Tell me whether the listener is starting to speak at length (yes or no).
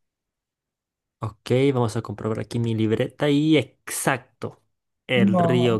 no